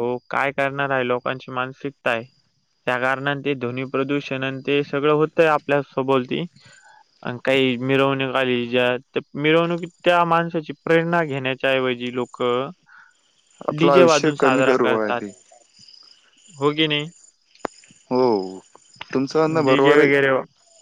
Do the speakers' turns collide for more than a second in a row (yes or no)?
yes